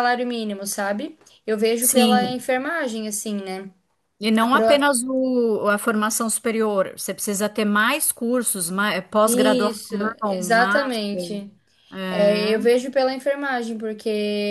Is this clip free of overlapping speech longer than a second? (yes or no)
no